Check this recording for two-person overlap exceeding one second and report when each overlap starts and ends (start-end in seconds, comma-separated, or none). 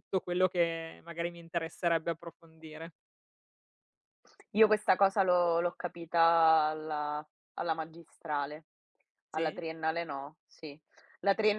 none